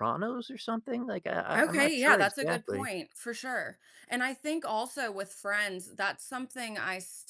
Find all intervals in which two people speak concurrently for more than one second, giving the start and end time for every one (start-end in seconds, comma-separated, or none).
1.6-2.9